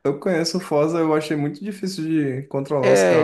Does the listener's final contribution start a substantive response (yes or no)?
yes